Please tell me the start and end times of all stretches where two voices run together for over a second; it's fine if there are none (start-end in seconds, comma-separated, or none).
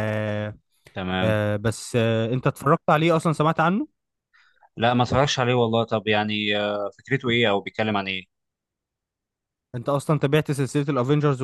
none